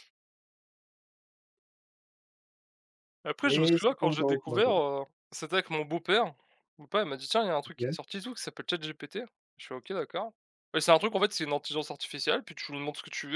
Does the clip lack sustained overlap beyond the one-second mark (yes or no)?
no